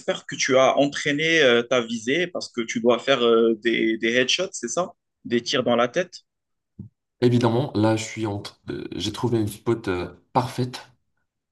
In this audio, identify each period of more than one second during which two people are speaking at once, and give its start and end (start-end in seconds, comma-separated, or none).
none